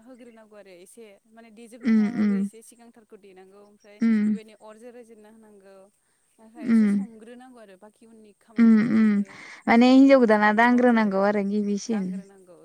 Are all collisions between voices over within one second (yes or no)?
no